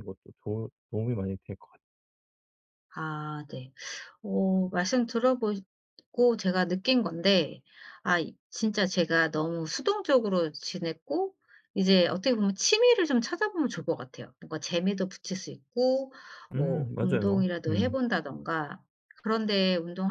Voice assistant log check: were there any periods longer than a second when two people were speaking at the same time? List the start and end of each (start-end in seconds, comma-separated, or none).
16.5-18.0